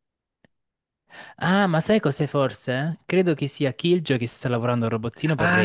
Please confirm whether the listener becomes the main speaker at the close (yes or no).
yes